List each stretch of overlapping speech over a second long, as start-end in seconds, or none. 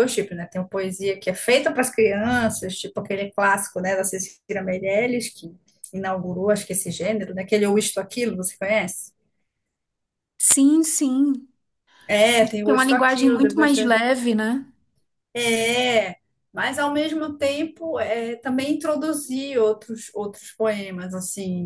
12.6-13.9